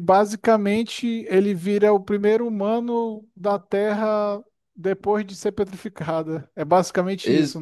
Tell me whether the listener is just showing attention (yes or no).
no